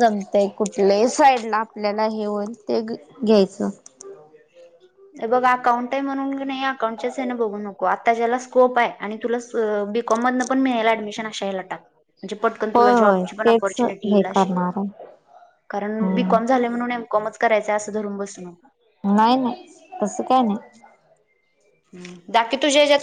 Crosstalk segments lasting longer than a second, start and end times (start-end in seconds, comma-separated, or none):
12.7-14.5